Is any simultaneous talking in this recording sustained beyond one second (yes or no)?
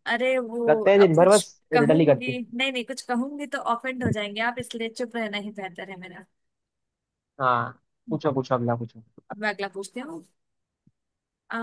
yes